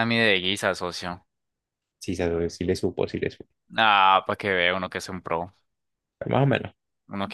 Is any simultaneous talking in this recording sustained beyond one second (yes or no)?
no